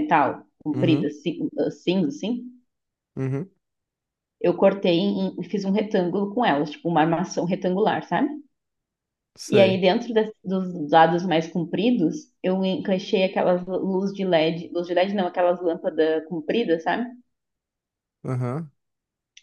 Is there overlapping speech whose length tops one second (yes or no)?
no